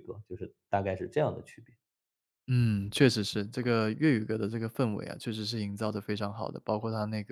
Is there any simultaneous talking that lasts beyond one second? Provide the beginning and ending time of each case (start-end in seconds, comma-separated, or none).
none